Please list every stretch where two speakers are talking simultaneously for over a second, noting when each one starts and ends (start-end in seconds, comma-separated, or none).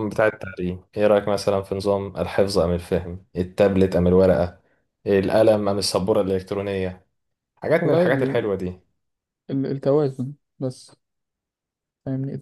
none